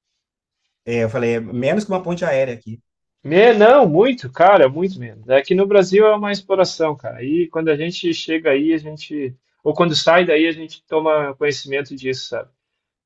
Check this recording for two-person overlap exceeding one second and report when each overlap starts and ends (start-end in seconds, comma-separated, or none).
none